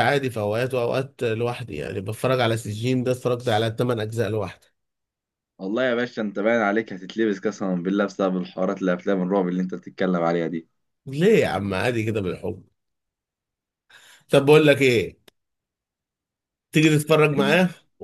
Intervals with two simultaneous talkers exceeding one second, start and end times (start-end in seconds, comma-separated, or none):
none